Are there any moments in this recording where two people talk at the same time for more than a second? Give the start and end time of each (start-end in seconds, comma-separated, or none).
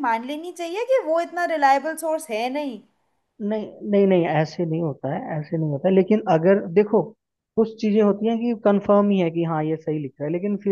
none